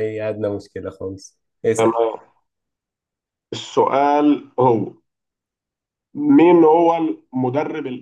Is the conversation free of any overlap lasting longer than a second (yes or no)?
yes